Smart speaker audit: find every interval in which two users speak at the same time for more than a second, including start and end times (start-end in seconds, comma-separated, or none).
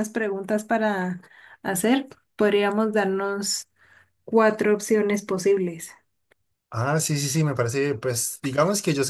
none